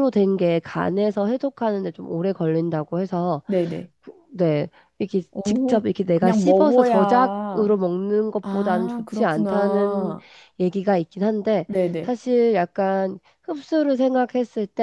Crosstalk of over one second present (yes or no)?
yes